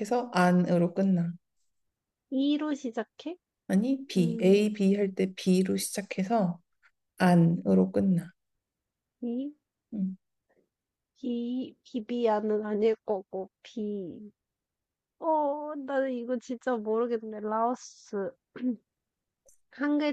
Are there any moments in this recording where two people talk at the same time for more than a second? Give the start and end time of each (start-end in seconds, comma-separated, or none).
none